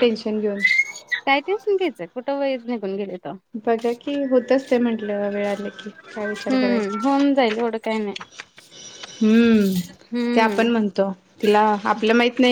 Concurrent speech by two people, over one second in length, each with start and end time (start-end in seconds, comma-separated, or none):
none